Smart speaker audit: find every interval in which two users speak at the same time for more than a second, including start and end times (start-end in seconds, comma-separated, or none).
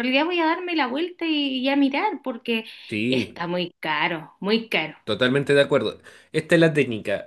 none